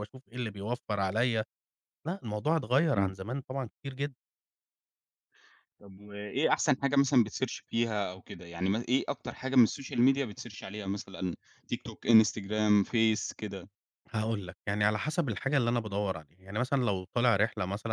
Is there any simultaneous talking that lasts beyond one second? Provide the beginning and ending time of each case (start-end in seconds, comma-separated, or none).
none